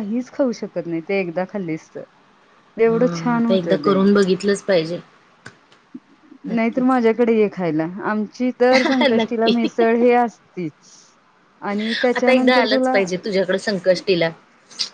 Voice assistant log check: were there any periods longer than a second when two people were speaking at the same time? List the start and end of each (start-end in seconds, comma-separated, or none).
none